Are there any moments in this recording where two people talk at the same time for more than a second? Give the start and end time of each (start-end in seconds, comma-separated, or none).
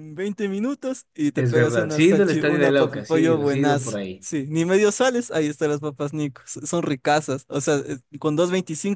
1.3-4.3